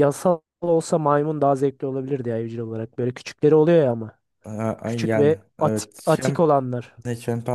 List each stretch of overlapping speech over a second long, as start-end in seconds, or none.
4.8-6.4